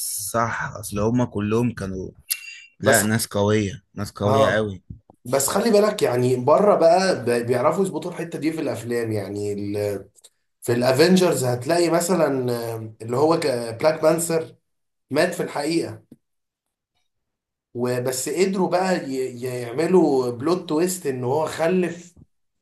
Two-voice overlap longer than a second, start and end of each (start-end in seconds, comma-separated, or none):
none